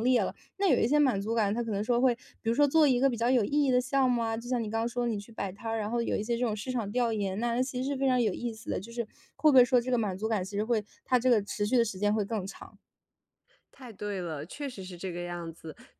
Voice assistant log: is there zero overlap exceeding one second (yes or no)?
yes